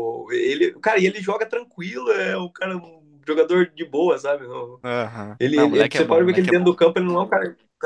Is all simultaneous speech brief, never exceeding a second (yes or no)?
no